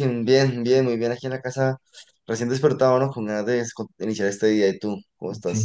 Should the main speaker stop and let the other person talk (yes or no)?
yes